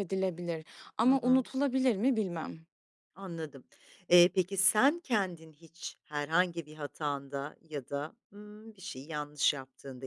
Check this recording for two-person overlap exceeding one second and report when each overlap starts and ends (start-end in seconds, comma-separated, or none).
none